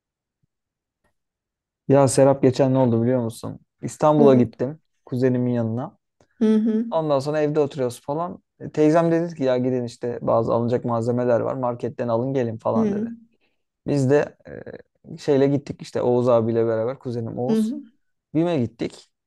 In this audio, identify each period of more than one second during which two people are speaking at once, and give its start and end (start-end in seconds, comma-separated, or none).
none